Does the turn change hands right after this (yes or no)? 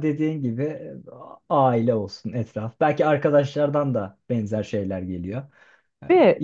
no